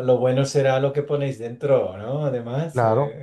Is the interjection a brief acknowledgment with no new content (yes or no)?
no